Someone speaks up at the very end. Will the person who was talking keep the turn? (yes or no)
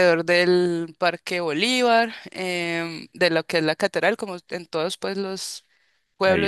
yes